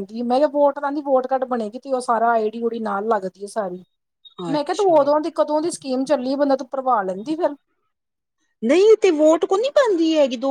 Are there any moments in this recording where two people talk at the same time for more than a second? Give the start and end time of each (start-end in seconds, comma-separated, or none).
none